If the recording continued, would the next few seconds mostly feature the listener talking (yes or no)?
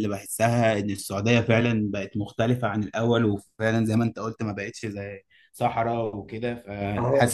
yes